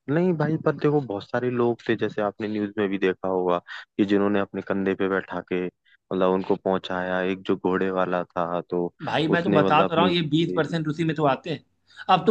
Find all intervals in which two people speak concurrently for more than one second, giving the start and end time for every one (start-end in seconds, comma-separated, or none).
9.4-10.9